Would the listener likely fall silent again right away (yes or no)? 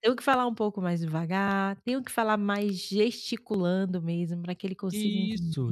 no